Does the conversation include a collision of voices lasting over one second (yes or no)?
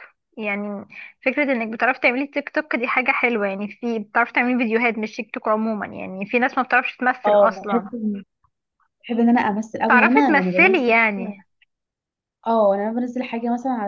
yes